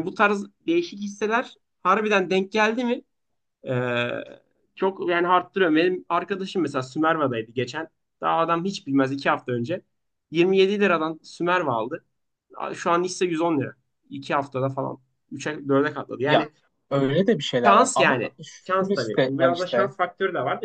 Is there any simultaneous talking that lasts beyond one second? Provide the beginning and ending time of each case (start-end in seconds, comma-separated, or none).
17.6-19.9